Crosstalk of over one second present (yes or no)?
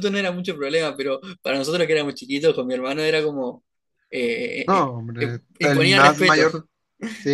yes